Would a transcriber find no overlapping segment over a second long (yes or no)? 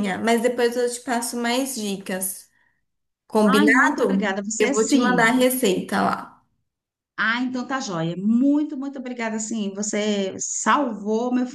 no